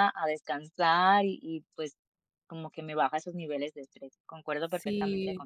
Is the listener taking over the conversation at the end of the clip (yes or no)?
yes